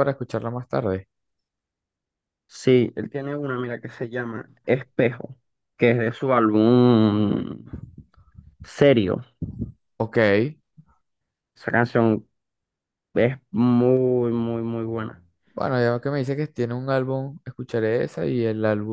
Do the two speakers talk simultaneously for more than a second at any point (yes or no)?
no